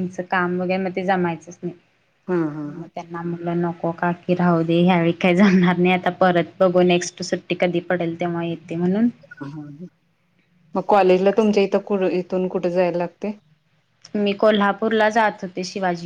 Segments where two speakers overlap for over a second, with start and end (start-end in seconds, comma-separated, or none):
none